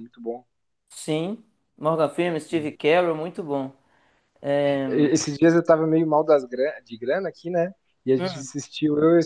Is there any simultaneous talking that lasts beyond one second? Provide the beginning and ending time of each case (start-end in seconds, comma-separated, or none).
none